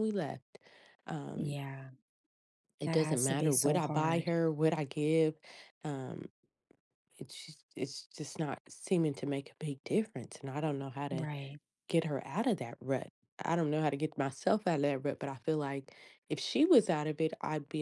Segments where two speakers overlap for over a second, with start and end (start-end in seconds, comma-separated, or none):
2.8-4.3